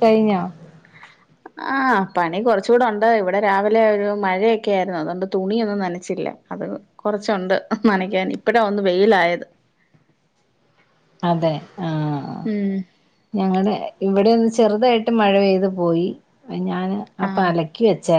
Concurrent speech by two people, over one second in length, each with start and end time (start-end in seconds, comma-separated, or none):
none